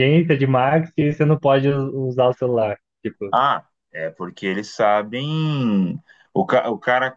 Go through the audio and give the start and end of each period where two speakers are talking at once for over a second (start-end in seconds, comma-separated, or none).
none